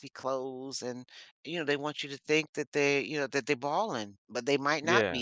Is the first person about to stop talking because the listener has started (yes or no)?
no